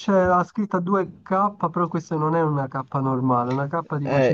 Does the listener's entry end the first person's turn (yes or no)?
yes